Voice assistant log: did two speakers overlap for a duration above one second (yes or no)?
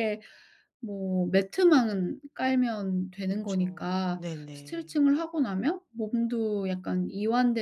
yes